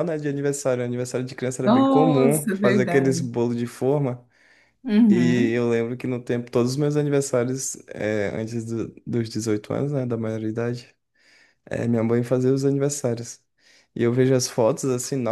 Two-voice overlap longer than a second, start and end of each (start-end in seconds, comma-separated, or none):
1.6-3.3